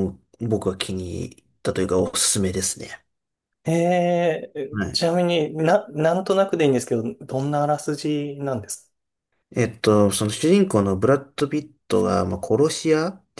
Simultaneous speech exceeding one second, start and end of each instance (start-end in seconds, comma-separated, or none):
none